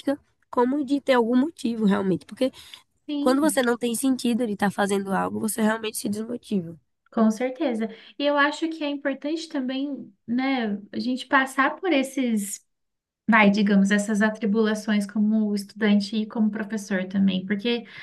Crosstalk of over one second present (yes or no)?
no